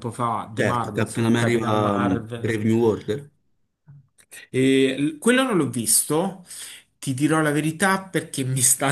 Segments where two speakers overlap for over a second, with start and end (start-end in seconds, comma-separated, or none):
0.6-2.6